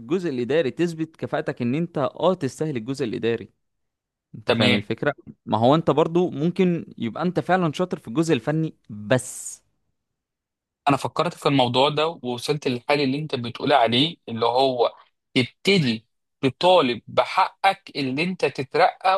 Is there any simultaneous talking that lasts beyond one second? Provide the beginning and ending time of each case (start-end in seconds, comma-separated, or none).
none